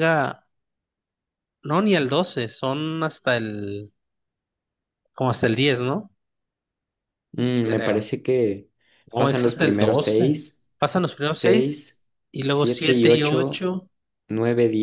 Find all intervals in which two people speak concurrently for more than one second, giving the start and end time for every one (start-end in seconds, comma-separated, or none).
9.2-10.4, 12.5-13.7